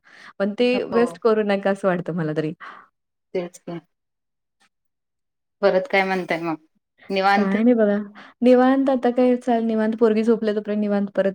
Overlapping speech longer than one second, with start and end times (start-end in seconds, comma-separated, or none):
none